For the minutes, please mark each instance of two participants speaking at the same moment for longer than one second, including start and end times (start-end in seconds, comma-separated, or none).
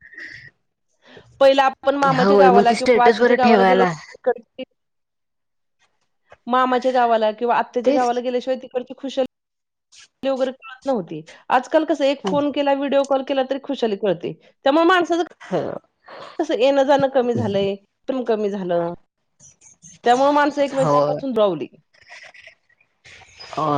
2.2-3.9